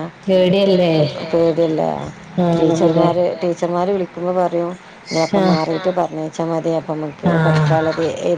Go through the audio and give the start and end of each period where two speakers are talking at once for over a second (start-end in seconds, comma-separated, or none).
none